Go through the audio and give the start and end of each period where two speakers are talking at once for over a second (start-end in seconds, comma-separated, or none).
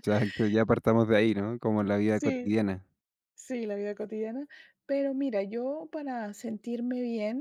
none